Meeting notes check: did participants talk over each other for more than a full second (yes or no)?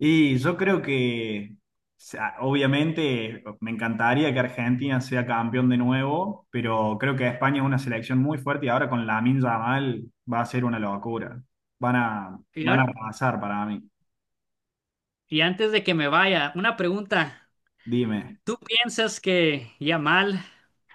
no